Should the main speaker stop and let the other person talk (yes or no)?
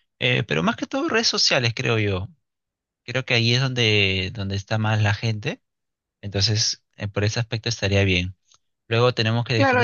yes